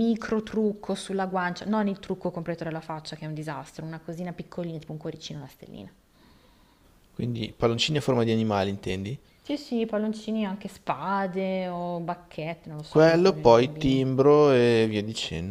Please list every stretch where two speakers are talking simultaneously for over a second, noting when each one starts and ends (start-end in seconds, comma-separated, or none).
12.9-14.1